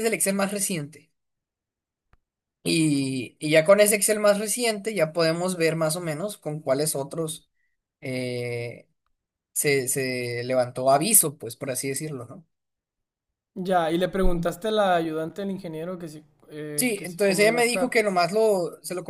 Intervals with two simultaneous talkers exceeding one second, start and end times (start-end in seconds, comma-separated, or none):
16.8-18.0